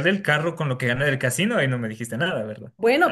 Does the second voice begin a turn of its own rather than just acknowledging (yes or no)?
yes